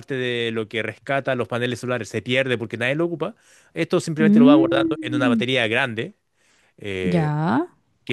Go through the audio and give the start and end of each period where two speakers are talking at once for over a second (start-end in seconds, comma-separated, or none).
4.2-5.4